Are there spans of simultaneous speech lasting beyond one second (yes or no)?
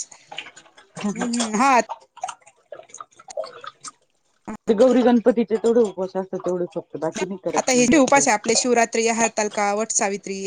no